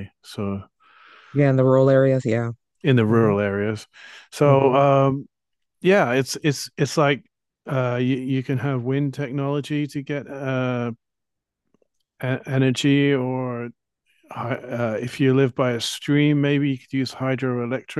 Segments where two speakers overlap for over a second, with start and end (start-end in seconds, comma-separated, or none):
none